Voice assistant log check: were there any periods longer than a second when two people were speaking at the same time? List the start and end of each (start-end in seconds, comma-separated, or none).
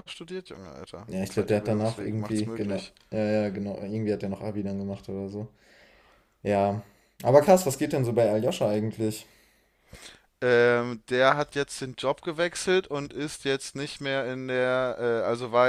1.1-2.9